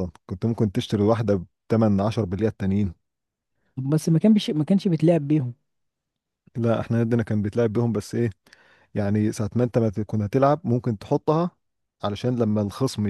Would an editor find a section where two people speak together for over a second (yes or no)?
no